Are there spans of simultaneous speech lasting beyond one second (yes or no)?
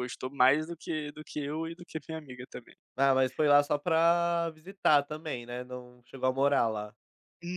no